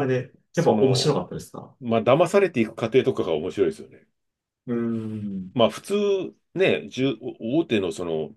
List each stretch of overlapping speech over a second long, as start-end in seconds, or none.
none